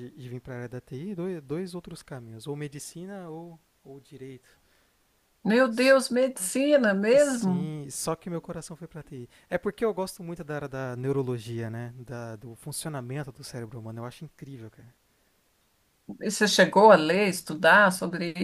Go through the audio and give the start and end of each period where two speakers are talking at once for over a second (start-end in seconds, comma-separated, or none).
none